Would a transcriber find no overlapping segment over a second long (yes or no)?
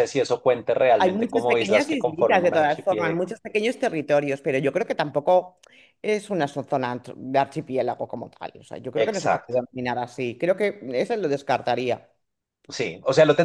no